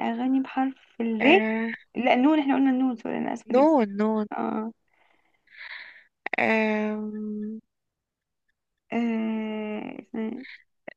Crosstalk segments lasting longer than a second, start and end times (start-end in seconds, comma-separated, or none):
none